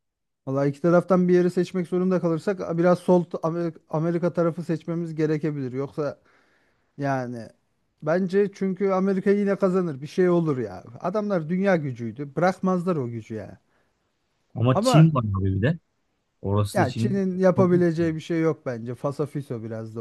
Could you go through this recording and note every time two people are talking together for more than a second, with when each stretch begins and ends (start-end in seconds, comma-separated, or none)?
16.7-18.1